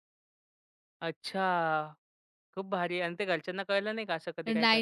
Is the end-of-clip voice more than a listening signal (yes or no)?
yes